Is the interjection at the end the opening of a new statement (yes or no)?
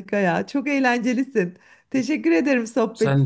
no